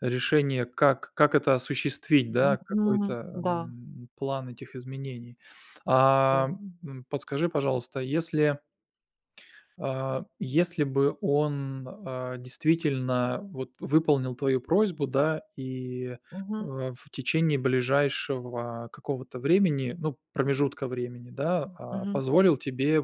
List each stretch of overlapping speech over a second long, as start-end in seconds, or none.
2.4-3.7